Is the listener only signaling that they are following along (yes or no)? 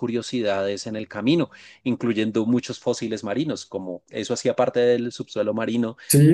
no